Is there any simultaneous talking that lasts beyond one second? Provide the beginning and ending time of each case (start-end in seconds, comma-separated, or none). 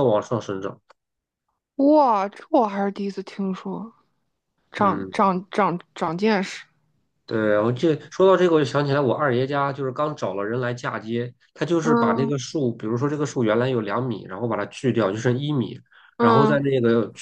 none